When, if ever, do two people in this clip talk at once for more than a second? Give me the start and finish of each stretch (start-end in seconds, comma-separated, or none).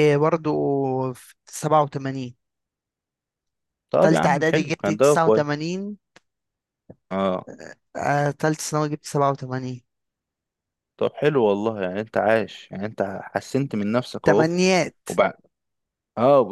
4.0-5.4